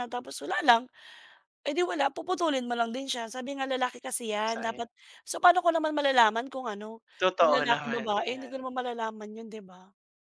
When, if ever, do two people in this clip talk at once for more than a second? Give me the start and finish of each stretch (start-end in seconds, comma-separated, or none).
7.2-8.5